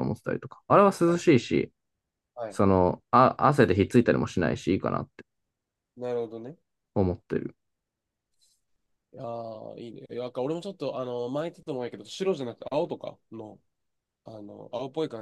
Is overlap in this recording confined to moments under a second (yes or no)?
yes